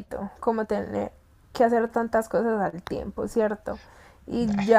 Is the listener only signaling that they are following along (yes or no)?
yes